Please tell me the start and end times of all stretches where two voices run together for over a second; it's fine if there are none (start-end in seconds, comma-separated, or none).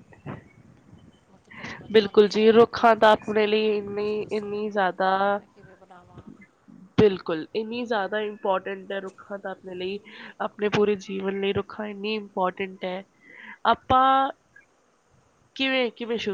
1.9-4.8